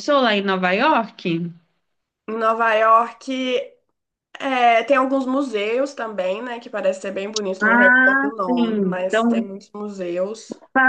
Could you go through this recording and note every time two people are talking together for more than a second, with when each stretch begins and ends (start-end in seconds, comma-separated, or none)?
7.6-9.5